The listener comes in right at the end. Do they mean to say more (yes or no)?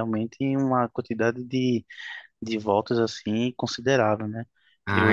yes